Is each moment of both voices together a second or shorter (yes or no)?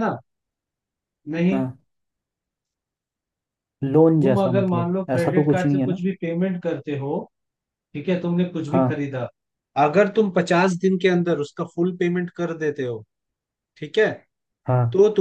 no